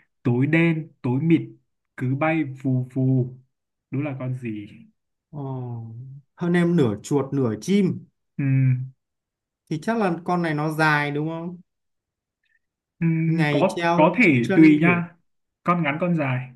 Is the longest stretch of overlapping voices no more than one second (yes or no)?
no